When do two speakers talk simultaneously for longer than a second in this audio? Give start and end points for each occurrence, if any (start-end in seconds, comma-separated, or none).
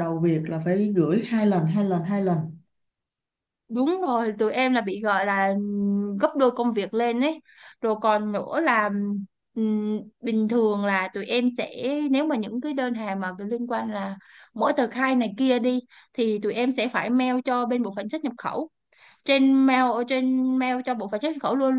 none